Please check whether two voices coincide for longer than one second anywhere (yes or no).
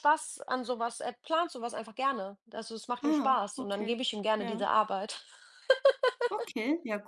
yes